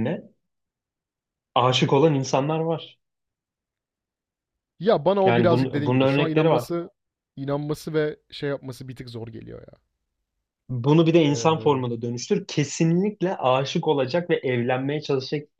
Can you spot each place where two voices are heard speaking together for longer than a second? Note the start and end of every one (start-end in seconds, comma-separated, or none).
5.2-6.7